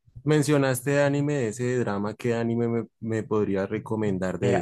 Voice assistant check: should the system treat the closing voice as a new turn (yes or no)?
yes